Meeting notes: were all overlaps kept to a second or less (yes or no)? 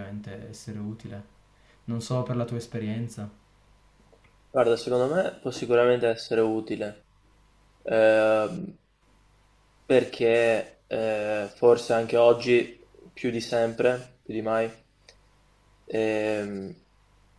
yes